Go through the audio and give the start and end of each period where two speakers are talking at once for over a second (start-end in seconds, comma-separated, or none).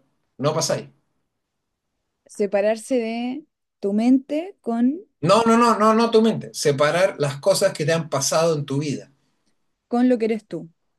none